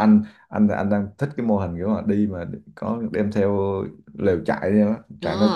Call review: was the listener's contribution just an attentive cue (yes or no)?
no